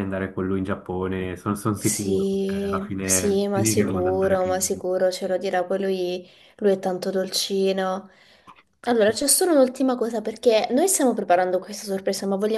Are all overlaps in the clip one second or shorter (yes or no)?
no